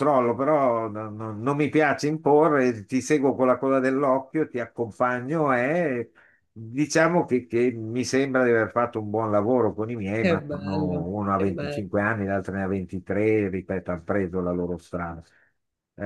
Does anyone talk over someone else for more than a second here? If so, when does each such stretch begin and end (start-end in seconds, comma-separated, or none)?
10.2-11.9